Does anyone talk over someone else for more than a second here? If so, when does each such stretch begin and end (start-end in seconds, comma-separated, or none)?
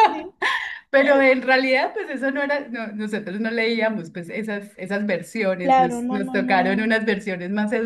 5.6-7.0